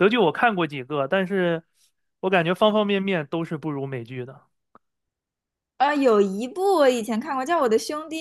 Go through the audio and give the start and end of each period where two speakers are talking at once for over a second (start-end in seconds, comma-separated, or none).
none